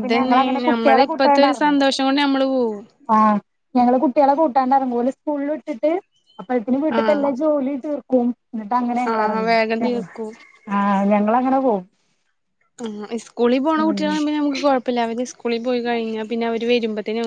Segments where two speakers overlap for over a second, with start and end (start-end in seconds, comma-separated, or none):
none